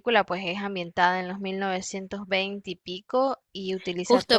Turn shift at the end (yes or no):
yes